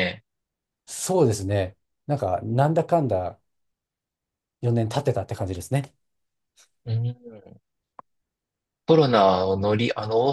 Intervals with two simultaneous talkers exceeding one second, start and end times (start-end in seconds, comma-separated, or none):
none